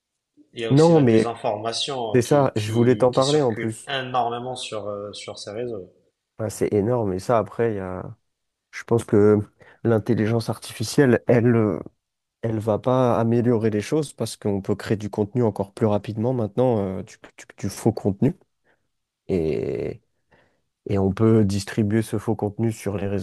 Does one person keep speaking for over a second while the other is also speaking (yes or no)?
yes